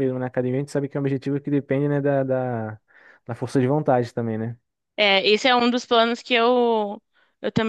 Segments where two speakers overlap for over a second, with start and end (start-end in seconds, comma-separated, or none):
none